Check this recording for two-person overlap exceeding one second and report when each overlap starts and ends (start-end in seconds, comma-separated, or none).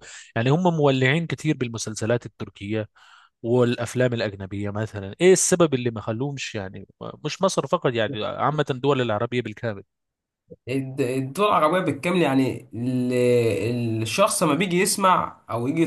none